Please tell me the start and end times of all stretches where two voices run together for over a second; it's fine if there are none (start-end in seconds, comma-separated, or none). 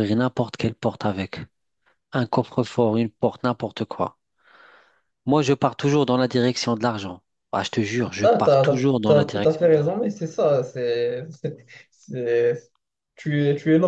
8.2-10.0